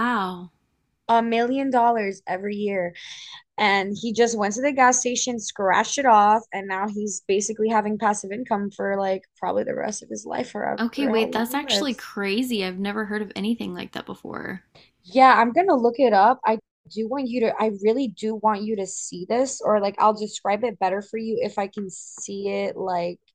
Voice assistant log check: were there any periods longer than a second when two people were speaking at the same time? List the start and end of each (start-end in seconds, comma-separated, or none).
10.8-12.0